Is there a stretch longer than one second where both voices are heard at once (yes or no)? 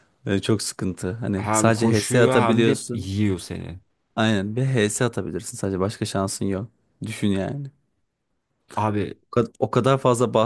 yes